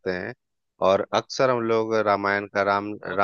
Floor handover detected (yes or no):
no